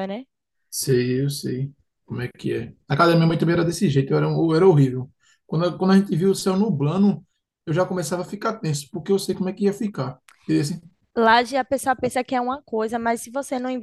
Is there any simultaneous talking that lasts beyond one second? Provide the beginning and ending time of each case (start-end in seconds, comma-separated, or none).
none